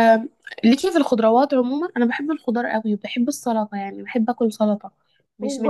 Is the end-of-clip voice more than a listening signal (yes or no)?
yes